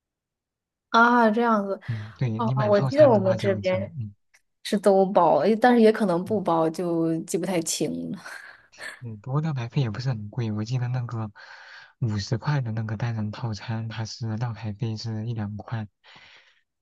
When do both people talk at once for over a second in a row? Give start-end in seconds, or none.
2.4-3.9